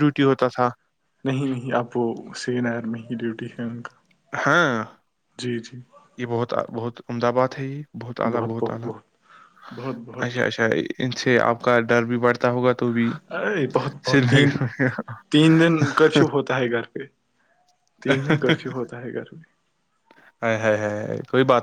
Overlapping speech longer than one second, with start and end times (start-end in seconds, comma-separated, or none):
none